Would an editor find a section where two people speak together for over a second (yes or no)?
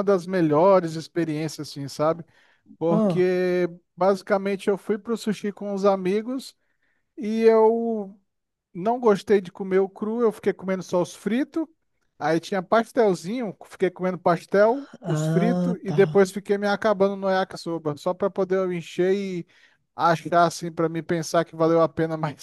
yes